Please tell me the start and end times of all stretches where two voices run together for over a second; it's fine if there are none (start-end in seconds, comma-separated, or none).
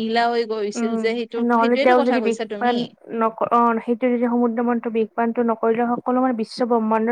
0.8-2.7